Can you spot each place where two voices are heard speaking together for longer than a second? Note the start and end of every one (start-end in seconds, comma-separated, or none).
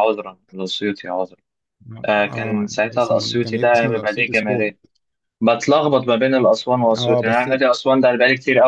2.0-4.7